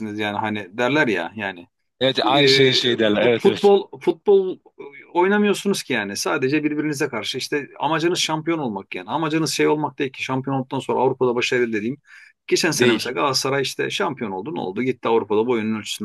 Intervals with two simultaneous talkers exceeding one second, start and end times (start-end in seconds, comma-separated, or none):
2.2-3.7